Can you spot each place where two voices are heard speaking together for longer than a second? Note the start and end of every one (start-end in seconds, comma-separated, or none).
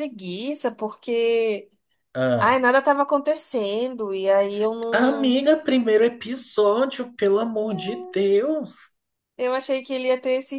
none